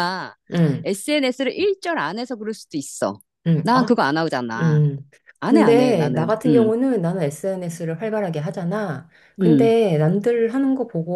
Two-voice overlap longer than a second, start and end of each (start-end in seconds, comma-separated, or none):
5.5-6.7